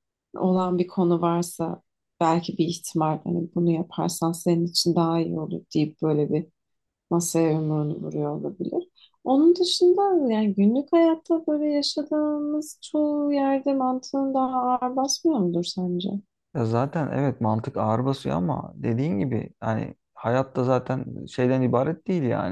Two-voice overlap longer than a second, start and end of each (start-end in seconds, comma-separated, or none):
none